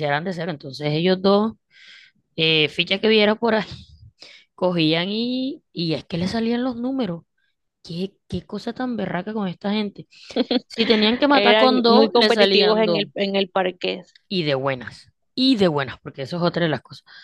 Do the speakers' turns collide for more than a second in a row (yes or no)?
yes